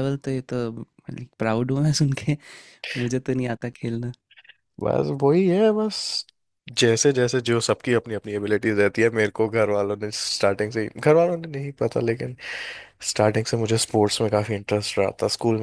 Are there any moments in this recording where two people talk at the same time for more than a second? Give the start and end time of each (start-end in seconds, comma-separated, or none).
none